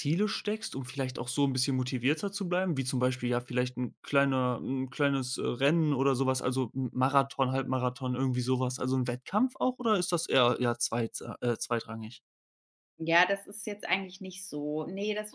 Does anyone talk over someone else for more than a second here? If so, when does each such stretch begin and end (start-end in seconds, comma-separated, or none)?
none